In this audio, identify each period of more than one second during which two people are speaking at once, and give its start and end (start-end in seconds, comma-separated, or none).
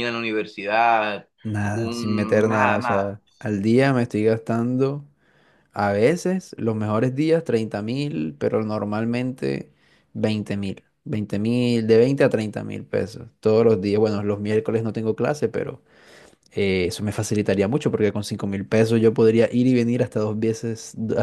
1.7-3.2